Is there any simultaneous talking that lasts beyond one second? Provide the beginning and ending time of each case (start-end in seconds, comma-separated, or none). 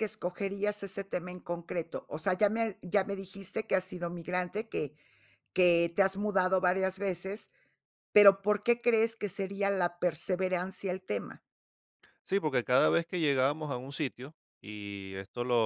none